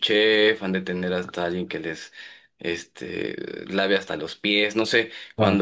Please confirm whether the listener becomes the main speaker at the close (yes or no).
no